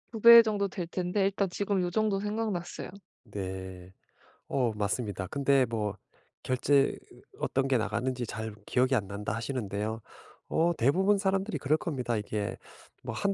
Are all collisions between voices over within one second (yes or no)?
yes